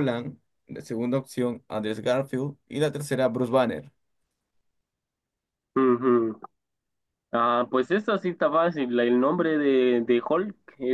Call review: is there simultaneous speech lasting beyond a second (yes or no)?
no